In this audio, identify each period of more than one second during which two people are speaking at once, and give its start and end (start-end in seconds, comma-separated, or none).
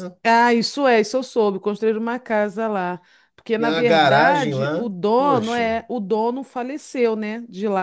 3.6-5.8